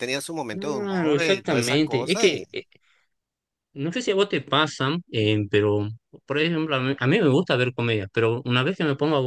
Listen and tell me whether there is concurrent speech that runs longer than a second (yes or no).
yes